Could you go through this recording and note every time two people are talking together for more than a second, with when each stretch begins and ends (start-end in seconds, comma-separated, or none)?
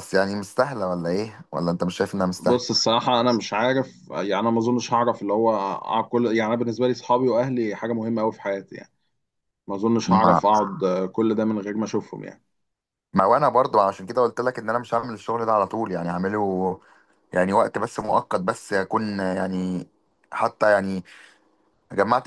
none